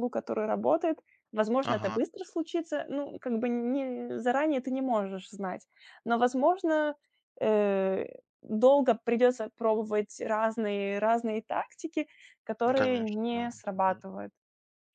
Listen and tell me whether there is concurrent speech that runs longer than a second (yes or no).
yes